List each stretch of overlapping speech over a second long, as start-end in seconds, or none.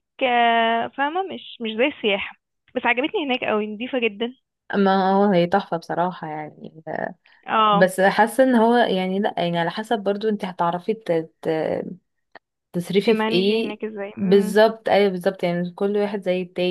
13.0-14.6